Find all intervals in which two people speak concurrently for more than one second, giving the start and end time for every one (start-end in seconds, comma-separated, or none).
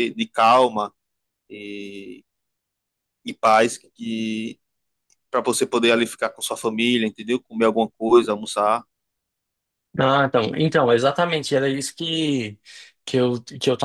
none